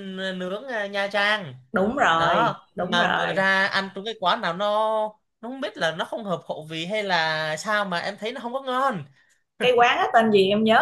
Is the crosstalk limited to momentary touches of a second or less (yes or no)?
no